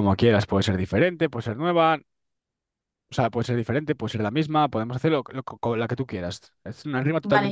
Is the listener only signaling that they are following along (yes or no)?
no